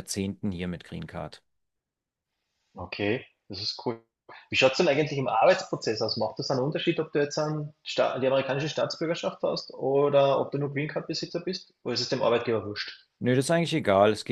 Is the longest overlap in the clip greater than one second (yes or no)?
no